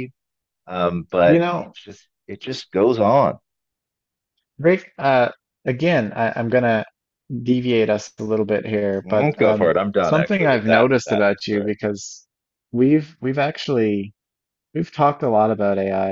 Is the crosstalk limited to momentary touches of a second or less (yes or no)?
no